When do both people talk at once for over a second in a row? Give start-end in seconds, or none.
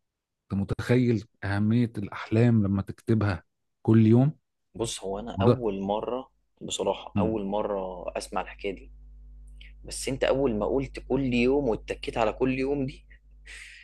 none